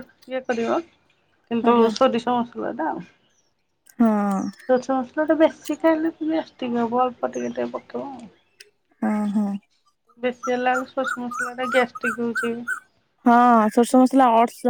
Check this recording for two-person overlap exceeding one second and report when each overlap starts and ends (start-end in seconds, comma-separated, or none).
none